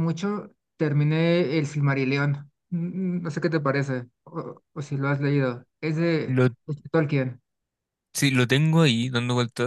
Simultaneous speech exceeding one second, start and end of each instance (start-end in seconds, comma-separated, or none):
none